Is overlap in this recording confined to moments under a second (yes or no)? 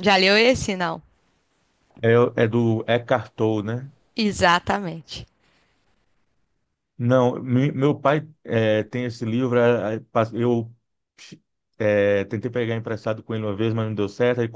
yes